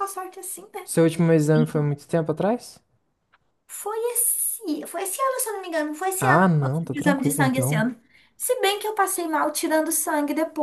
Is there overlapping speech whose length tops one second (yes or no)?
yes